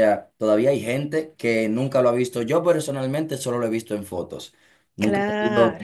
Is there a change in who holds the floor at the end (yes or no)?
no